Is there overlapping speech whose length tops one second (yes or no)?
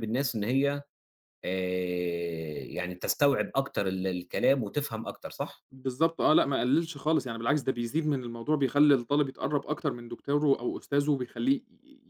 no